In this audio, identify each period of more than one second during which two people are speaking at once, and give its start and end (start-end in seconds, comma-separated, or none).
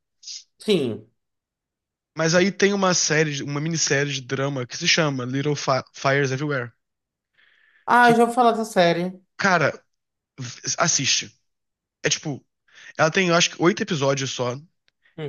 none